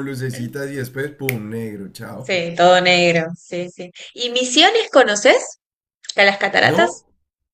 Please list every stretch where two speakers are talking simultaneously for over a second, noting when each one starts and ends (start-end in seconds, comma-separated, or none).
none